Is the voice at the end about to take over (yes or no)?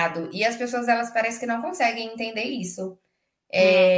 no